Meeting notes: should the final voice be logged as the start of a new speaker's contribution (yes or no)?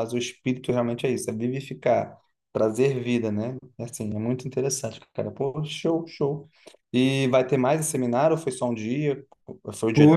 yes